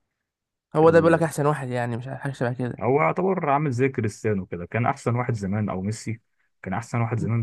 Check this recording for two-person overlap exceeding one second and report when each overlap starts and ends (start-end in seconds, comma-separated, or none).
none